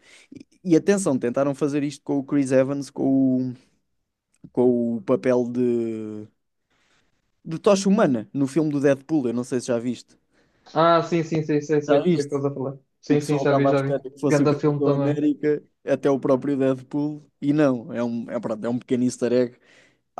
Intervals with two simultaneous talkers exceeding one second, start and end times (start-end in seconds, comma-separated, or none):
13.1-15.2